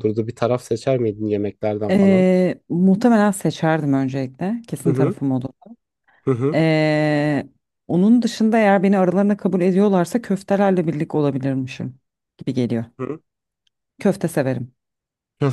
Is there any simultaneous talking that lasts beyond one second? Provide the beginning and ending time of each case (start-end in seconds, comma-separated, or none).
none